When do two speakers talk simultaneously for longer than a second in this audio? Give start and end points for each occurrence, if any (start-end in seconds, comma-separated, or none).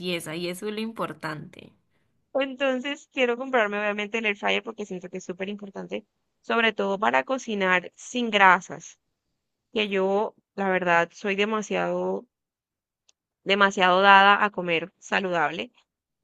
none